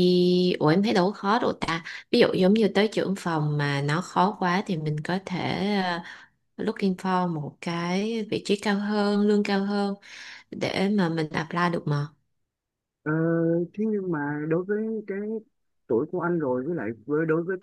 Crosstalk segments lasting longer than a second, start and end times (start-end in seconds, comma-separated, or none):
none